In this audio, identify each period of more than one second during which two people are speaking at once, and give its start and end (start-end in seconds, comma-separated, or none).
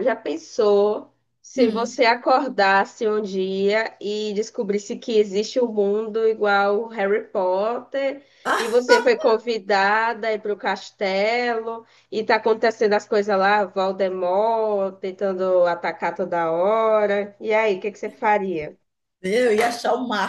none